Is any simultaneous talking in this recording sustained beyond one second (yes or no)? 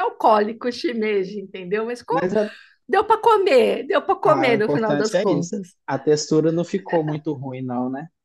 yes